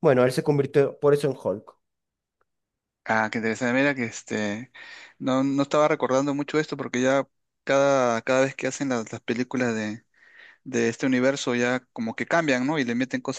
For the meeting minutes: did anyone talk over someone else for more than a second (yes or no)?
no